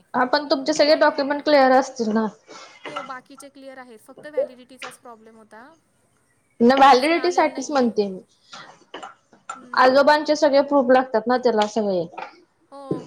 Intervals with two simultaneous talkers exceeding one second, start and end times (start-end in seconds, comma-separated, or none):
6.7-8.0